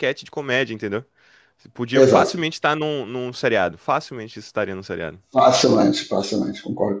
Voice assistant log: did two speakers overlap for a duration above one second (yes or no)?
no